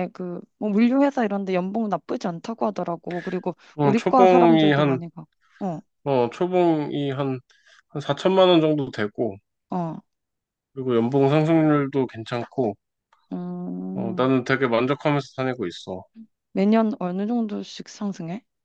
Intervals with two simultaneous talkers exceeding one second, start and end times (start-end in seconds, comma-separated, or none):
3.7-5.0